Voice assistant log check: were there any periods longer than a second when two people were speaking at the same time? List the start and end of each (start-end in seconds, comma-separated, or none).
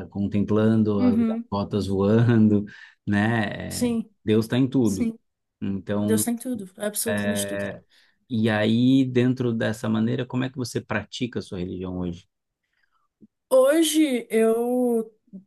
none